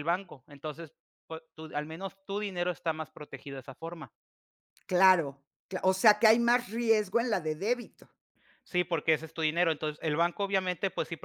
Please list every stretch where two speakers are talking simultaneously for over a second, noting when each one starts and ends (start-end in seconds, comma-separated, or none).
none